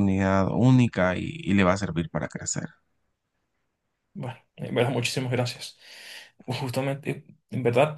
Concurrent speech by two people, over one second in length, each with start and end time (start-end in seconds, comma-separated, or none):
none